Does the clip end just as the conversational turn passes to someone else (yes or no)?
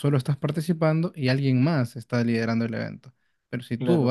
no